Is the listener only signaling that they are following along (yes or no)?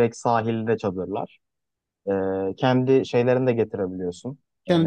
yes